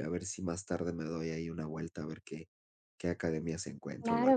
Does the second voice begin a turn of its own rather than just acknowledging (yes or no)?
yes